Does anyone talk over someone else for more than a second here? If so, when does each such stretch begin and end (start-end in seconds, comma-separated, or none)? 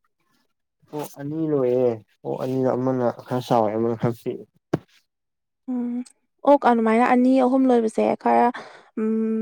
none